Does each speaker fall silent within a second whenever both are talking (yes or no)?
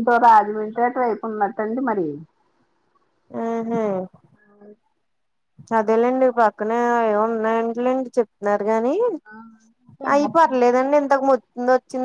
yes